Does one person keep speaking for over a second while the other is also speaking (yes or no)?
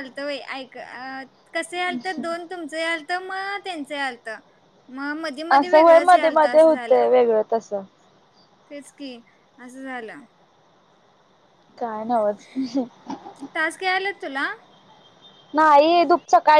yes